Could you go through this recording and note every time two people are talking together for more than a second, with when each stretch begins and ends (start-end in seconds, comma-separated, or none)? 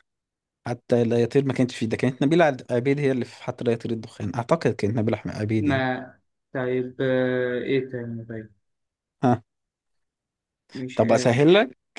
none